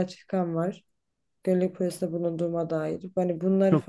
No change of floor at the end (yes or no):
yes